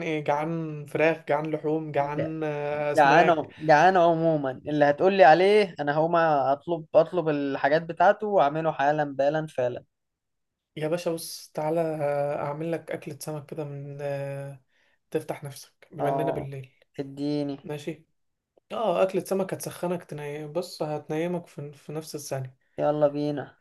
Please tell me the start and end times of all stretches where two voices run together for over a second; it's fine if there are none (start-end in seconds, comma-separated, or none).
none